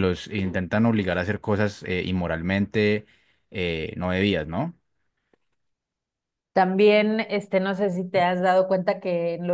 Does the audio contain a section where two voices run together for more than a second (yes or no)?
no